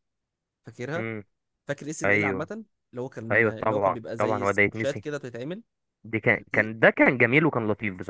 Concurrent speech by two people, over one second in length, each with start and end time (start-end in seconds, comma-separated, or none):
3.3-5.0